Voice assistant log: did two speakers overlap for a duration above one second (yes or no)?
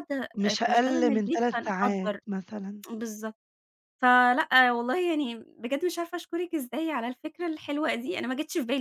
yes